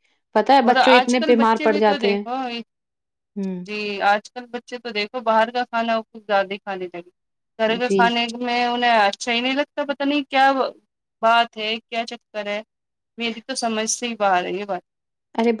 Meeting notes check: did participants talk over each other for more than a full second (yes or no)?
yes